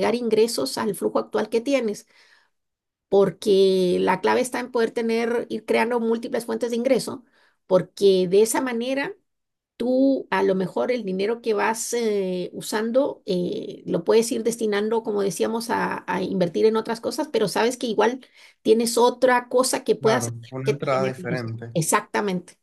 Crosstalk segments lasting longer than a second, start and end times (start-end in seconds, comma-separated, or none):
20.0-21.7